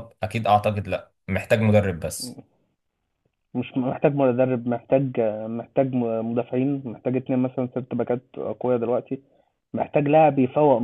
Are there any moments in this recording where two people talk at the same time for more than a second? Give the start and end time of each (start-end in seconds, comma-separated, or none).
none